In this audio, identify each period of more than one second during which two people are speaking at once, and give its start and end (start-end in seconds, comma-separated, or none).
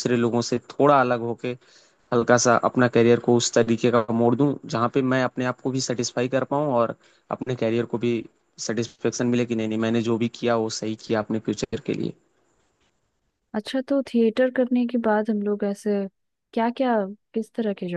none